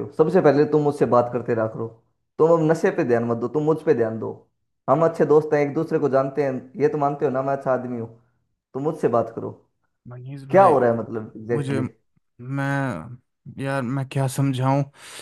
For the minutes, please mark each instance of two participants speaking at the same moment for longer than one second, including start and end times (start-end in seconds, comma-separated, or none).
none